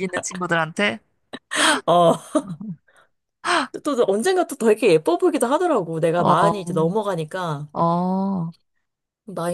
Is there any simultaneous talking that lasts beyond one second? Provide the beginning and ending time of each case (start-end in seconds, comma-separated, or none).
none